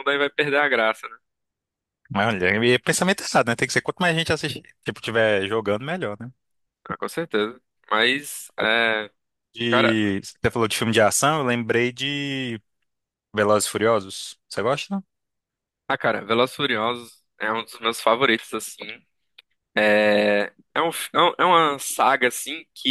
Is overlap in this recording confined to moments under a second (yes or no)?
yes